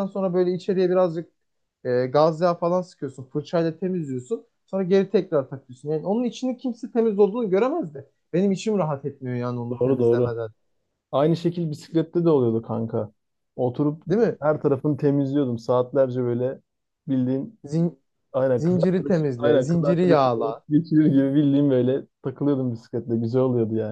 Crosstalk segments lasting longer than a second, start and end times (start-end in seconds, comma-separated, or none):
18.6-20.6